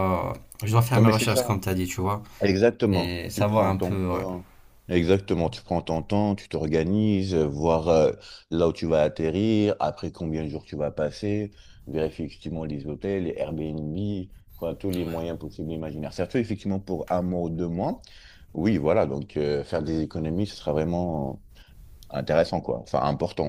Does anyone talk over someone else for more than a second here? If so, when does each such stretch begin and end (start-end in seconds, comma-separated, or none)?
2.9-4.2